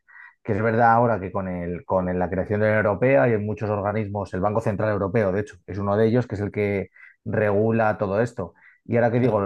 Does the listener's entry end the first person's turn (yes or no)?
no